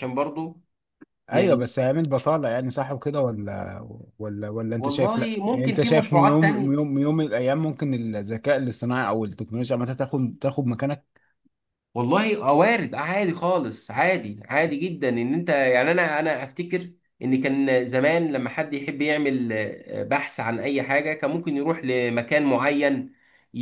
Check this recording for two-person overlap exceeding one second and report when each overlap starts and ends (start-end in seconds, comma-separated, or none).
4.8-6.7